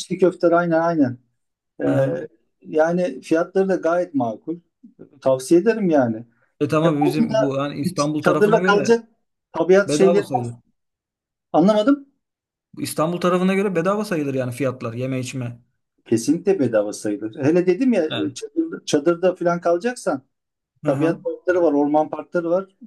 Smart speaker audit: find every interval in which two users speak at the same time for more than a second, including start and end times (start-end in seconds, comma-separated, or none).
6.8-9.0